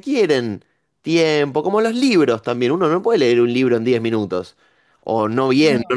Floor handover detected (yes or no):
no